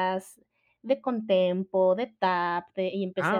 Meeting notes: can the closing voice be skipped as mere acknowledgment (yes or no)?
no